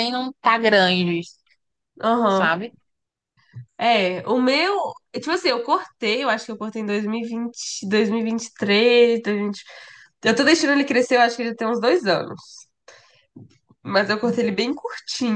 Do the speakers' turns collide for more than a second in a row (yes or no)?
no